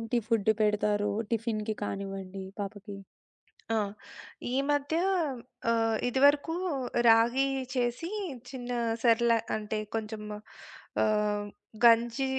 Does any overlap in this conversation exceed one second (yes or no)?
no